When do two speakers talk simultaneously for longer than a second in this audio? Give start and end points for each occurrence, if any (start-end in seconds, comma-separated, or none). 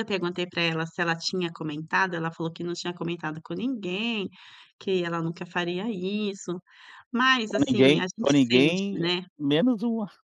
7.5-9.2